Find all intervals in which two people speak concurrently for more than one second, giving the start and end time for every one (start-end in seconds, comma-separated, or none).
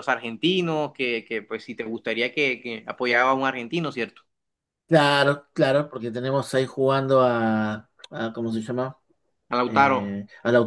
none